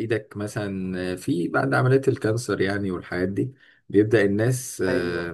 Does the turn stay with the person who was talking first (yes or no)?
yes